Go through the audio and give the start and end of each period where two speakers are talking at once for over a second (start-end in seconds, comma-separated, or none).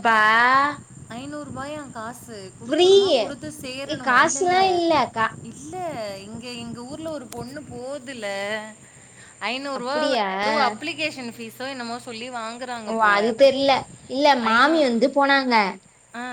2.6-4.6